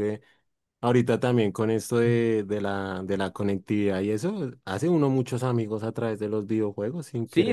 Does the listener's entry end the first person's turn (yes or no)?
yes